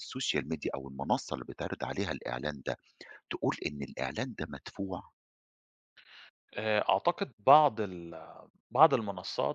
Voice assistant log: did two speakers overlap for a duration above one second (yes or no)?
no